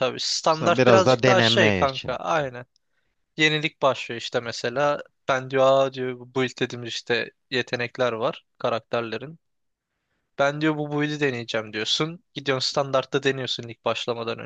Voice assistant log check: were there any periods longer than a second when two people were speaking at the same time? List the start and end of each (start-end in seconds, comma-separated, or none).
0.6-2.2